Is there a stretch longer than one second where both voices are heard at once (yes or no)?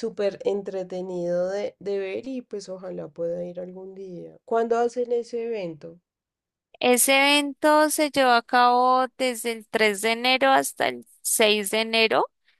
no